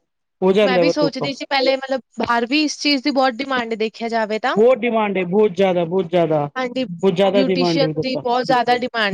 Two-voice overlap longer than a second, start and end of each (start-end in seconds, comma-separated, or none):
7.0-8.2